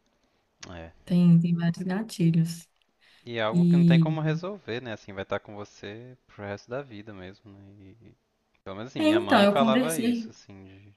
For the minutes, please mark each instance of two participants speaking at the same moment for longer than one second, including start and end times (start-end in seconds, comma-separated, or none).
9.0-10.3